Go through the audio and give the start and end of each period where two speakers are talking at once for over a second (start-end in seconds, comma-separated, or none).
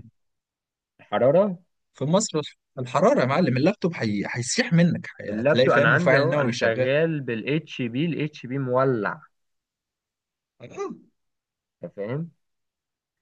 5.3-6.9